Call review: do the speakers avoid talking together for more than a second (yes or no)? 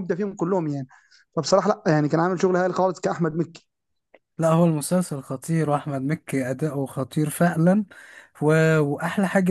yes